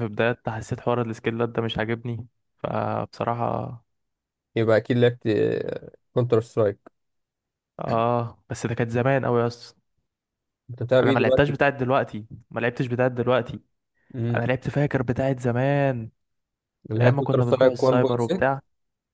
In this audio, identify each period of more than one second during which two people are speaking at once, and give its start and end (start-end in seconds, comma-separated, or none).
17.0-18.4